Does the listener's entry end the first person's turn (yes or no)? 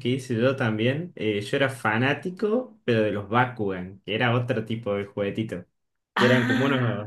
no